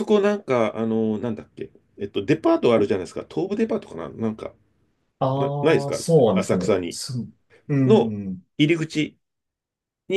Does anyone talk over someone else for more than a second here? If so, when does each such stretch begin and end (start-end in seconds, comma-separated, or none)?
5.3-7.0